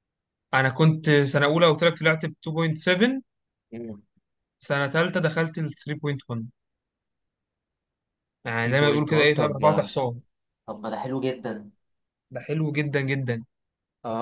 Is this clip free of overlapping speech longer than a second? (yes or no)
no